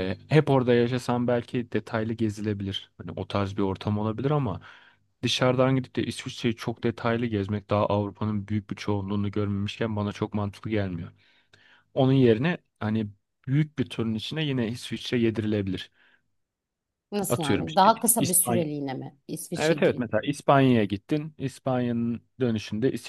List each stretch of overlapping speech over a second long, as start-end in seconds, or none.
17.3-18.6